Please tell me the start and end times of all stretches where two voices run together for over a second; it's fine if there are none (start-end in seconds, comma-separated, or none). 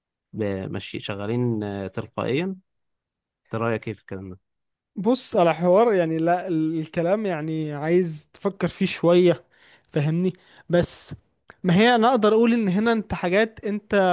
none